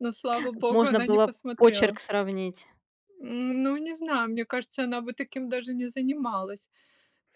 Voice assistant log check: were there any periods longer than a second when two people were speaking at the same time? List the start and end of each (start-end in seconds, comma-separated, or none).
0.7-2.0